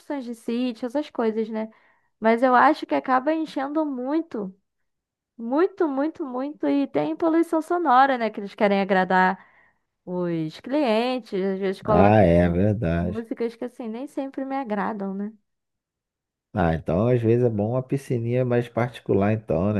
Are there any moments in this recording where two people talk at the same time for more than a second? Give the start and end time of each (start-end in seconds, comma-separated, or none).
none